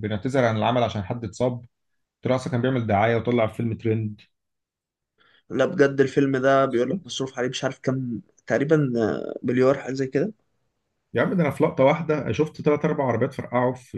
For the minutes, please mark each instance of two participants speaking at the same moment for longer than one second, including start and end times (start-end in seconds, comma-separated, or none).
none